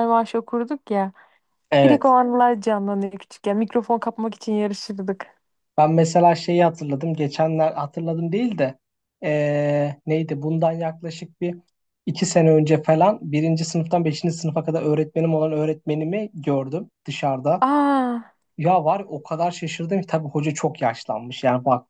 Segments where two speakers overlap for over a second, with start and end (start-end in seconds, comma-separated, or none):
none